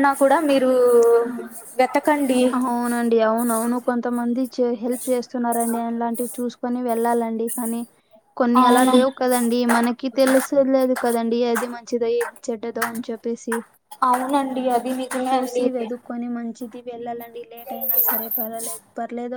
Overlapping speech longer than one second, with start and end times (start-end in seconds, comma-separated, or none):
none